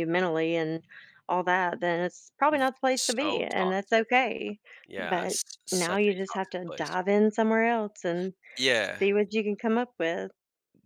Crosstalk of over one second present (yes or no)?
yes